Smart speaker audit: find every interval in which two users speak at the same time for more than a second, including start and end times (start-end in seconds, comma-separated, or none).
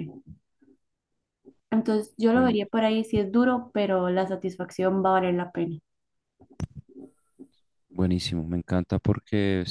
none